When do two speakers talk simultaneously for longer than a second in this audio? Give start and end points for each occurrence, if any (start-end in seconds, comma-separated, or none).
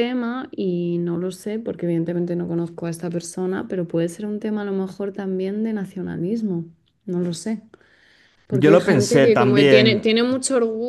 8.5-10.1